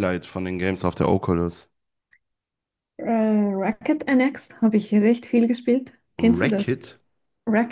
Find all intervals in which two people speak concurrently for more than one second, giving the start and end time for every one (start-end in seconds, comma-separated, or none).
none